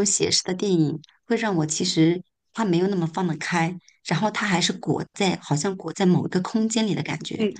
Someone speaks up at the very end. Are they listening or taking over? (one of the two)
listening